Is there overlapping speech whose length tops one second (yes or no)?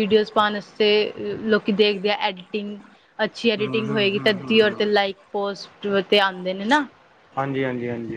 yes